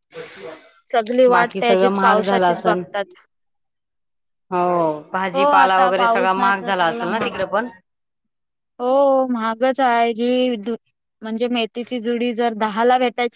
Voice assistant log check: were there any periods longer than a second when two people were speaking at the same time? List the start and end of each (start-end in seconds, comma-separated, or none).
1.3-2.8, 5.3-7.3